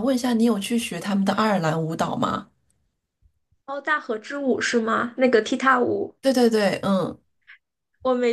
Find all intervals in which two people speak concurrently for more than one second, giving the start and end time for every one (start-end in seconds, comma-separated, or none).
none